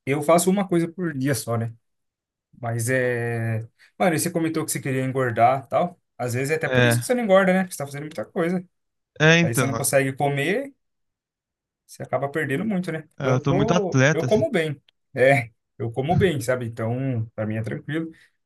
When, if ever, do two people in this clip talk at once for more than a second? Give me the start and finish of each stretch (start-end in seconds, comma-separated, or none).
13.2-14.4